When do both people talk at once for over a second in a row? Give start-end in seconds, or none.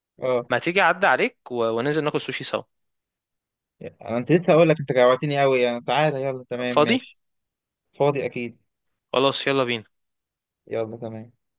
none